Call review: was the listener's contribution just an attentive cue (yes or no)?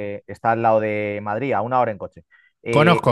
yes